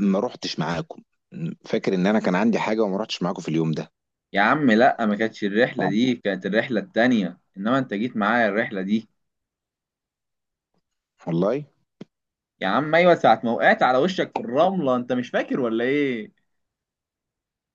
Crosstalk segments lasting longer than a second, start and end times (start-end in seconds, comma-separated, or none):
none